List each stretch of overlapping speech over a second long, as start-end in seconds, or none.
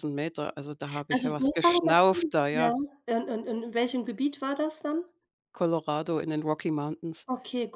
1.1-2.7